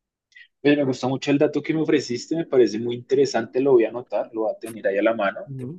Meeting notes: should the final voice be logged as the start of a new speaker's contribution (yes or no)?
no